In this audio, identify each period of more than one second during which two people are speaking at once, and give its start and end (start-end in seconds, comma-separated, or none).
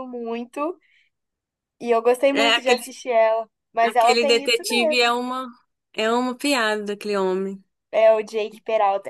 3.9-5.1